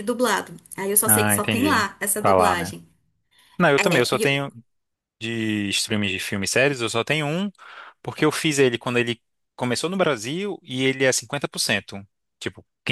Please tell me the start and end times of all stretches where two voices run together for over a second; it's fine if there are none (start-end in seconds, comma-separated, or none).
1.1-2.7